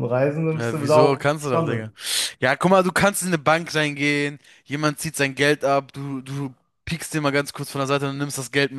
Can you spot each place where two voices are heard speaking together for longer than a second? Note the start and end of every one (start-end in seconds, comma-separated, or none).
0.6-1.9